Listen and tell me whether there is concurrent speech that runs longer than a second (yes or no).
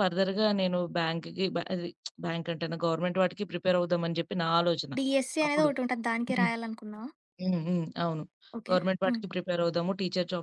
no